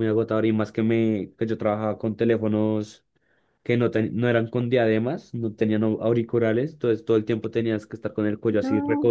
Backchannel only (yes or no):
yes